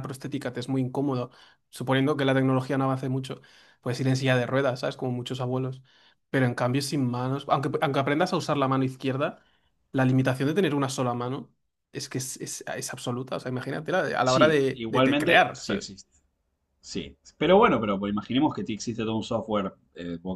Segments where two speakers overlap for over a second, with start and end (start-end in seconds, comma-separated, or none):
14.2-15.9